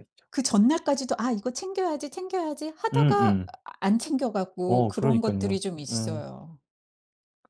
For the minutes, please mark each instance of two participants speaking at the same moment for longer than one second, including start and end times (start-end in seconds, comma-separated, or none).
4.7-6.2